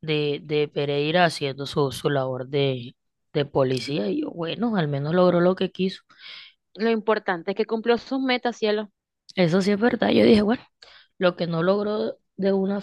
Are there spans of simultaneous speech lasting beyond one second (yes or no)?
no